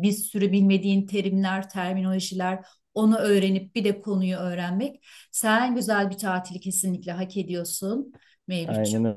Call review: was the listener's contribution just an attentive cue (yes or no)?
no